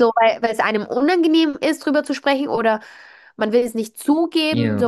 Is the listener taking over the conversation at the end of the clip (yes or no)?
yes